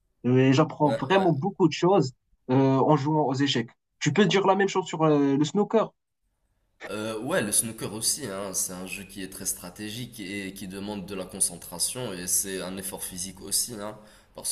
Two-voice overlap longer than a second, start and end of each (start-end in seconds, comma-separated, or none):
none